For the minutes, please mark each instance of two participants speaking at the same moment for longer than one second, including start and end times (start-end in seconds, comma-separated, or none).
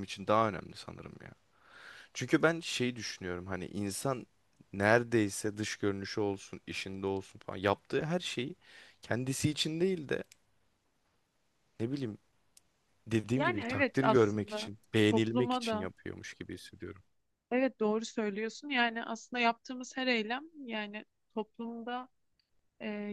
13.4-15.9